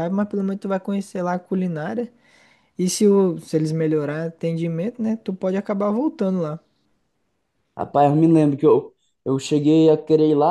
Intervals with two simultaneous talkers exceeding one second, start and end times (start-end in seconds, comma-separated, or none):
none